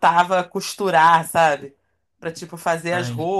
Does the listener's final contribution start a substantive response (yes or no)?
no